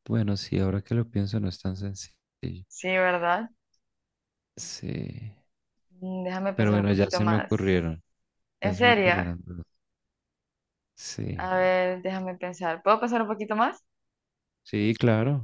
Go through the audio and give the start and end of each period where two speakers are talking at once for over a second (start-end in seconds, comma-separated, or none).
6.5-7.8